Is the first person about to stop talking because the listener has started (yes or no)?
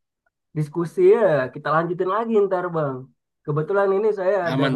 no